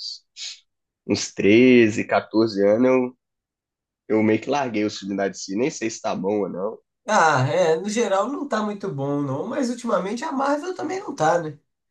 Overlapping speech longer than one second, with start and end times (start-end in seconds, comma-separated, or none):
none